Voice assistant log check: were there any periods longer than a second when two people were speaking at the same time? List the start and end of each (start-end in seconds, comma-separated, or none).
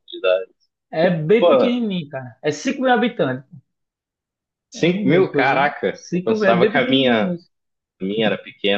4.8-7.3